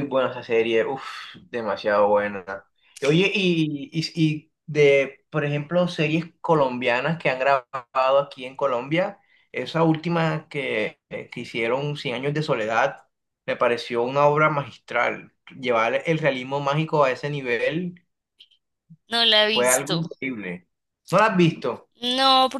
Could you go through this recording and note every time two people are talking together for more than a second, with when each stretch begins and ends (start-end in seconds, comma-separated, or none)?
none